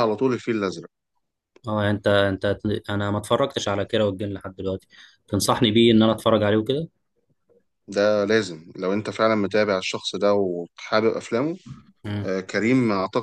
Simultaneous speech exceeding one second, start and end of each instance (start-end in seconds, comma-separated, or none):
none